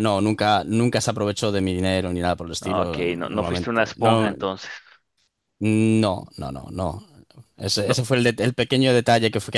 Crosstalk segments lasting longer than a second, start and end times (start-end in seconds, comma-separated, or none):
2.6-4.3